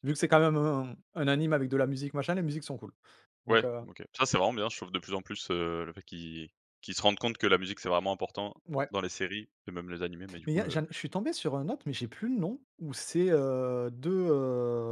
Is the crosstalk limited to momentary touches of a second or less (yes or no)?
yes